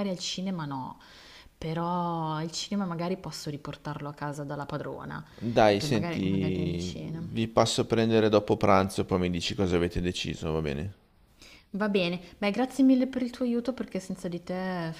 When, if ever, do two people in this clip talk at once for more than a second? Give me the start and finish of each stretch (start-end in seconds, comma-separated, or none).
5.8-7.2